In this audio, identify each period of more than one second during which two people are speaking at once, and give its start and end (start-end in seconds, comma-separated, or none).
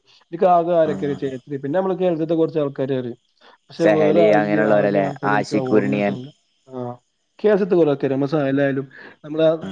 3.8-6.0